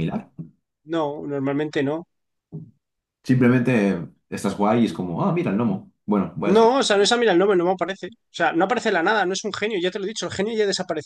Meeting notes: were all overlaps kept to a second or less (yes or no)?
yes